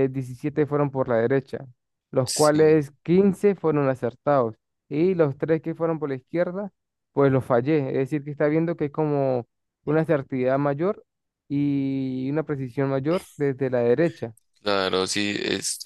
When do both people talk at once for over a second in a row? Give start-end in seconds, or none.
none